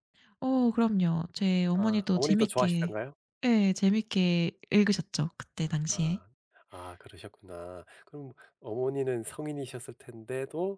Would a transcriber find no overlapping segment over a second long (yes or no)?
no